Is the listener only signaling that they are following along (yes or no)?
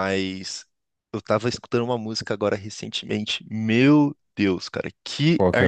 yes